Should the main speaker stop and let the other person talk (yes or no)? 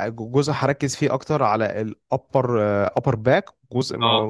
no